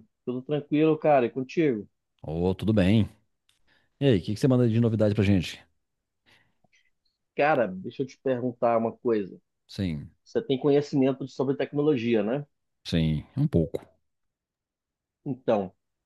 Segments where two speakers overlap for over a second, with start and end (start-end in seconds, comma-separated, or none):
none